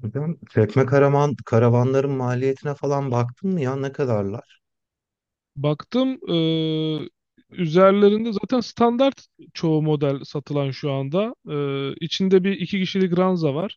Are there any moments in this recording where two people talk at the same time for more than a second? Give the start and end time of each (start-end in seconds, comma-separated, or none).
none